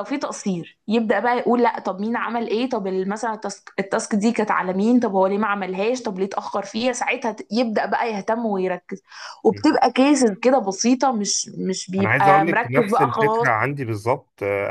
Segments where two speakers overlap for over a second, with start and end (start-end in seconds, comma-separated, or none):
12.0-13.5